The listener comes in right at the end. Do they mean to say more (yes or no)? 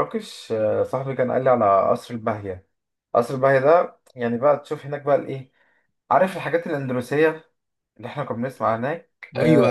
yes